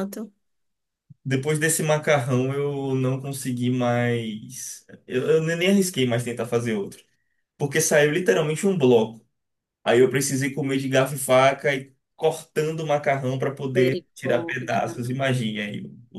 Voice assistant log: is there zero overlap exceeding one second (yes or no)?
no